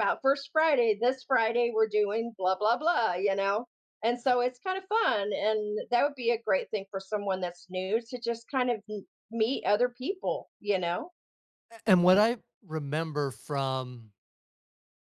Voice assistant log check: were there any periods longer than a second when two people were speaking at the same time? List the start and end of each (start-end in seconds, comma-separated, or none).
none